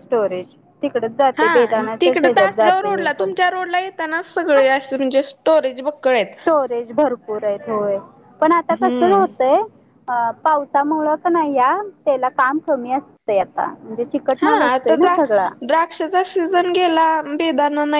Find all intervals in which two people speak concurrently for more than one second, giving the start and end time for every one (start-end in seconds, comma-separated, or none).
1.4-3.3